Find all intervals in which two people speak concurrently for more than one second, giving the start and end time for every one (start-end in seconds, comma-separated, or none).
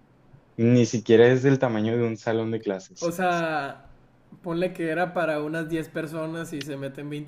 none